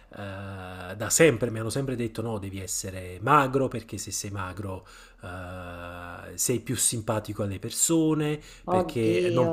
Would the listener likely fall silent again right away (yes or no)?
yes